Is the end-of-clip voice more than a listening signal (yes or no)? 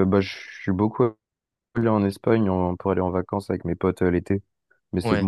no